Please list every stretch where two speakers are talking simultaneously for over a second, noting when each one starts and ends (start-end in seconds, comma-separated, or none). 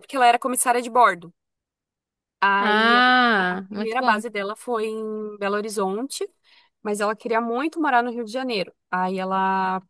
2.6-4.2